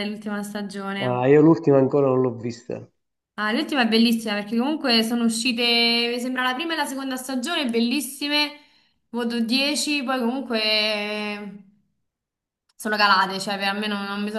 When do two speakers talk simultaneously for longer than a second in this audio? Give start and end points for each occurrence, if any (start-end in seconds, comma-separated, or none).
none